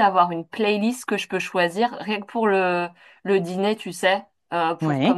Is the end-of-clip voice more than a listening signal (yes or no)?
no